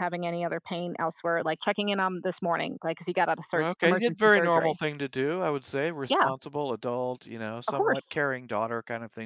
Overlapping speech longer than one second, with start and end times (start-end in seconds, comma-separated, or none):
3.6-4.8